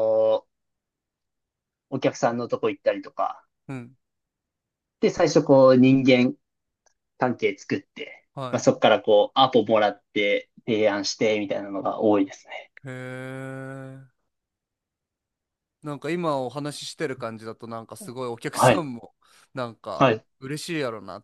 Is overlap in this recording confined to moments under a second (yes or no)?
yes